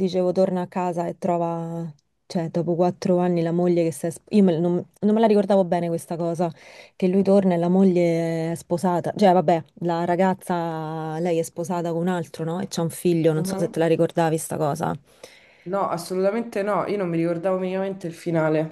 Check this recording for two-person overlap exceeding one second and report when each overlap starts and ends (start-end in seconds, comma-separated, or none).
none